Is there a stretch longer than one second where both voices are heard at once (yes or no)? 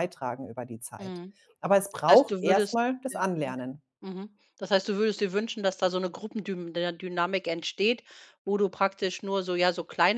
yes